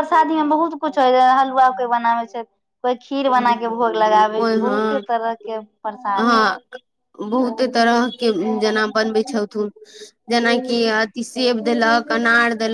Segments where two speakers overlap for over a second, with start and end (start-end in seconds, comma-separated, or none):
3.4-5.0